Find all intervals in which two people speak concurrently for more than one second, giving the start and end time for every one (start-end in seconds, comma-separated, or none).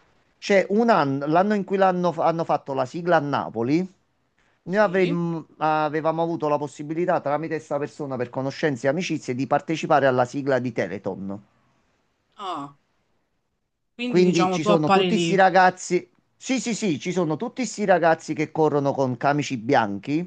14.1-15.4